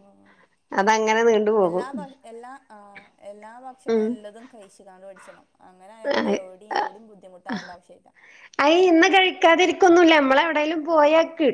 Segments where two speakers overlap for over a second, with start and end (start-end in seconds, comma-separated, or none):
none